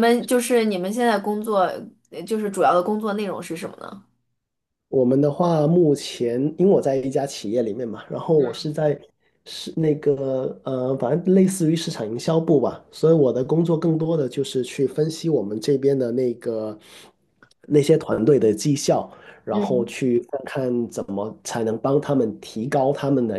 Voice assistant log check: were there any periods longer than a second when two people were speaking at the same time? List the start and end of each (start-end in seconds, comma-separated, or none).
none